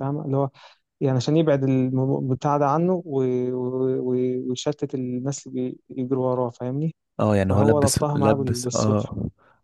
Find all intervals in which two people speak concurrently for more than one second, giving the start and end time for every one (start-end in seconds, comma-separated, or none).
7.5-9.1